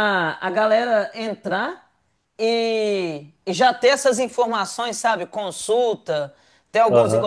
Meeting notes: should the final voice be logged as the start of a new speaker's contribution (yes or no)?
no